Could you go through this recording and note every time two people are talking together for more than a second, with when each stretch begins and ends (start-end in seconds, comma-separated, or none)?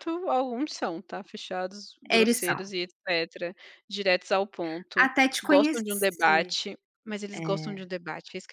5.0-6.5